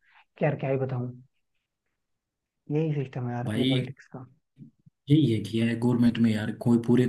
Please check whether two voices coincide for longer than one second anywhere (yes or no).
no